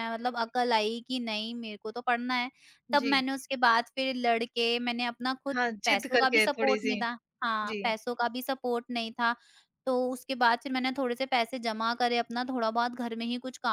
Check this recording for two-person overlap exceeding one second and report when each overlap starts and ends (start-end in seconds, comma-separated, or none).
5.5-7.0